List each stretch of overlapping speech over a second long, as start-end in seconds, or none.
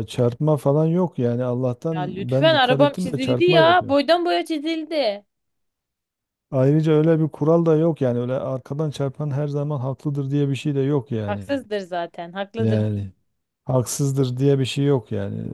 1.9-3.8